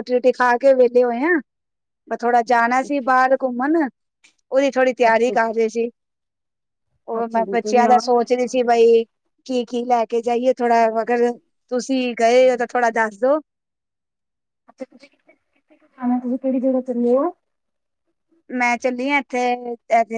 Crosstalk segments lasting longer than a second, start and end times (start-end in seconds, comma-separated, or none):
7.2-8.6